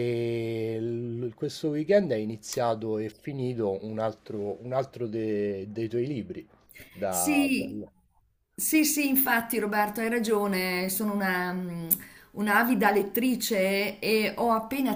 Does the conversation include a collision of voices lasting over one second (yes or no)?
no